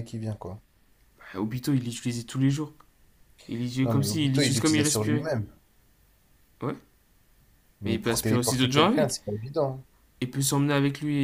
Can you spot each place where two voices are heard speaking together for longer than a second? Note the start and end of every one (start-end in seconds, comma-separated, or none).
3.8-5.3, 7.8-9.2